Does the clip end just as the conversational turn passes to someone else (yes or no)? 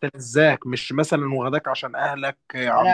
yes